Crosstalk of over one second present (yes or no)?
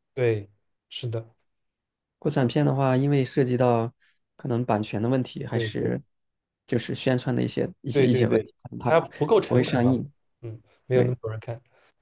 yes